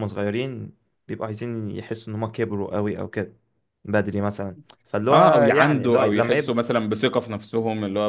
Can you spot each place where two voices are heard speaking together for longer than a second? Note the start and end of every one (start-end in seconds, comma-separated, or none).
5.1-6.6